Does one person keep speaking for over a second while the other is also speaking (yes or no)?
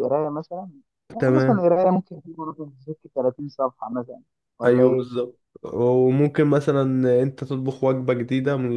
no